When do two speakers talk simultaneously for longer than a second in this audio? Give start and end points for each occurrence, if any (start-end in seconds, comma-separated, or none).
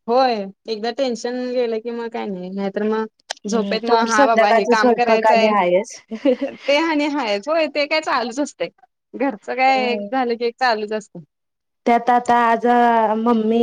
3.5-5.5